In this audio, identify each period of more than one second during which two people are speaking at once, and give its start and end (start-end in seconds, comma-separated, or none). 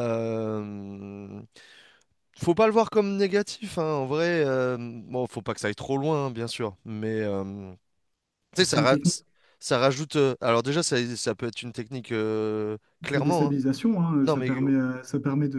none